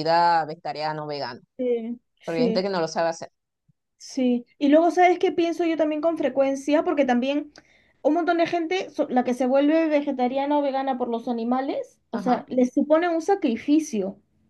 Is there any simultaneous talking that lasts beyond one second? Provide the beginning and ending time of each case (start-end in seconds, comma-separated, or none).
none